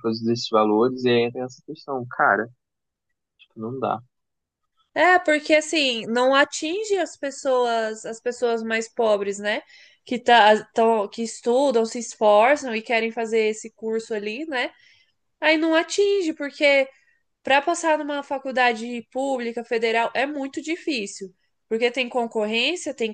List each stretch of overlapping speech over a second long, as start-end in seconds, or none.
none